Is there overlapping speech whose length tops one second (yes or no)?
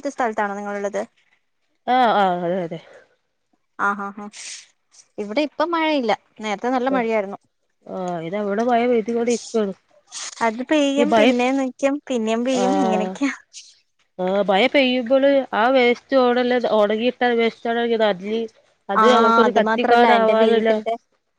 yes